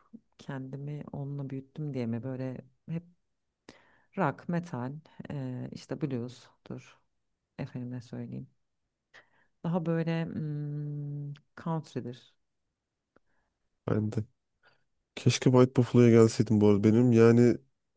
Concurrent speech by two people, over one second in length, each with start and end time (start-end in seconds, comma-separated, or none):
none